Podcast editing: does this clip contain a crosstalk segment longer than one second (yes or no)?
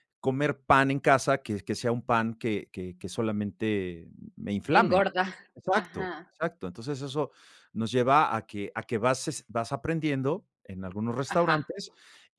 no